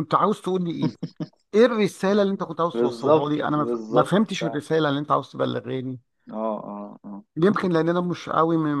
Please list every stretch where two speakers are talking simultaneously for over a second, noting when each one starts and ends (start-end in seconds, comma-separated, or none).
2.7-4.6